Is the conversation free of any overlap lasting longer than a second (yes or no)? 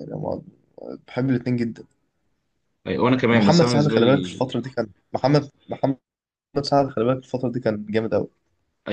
no